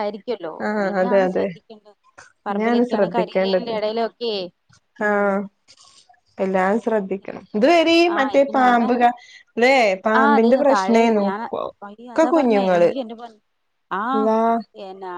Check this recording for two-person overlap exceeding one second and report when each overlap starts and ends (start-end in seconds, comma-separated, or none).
2.5-3.7